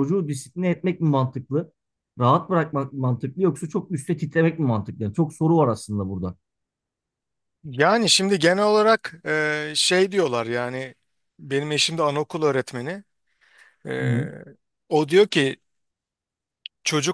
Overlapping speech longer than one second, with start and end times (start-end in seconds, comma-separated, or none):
none